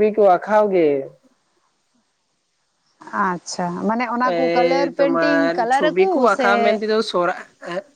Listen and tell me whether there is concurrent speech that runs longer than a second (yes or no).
yes